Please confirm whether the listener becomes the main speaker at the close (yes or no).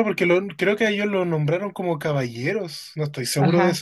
yes